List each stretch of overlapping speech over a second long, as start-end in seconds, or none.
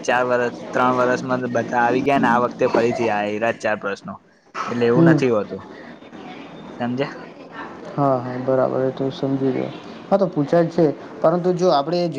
none